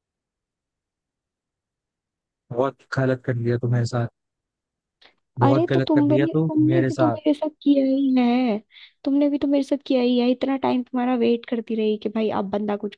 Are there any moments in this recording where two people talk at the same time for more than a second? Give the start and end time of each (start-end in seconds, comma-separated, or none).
5.4-7.2